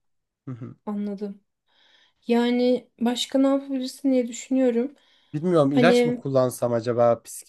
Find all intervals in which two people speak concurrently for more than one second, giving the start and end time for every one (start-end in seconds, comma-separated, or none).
none